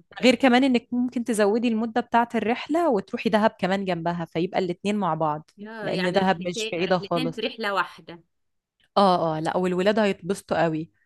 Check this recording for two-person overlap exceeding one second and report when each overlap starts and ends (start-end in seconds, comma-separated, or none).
5.6-7.4